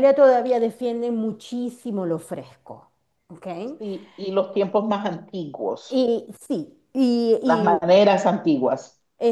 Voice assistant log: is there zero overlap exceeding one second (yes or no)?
yes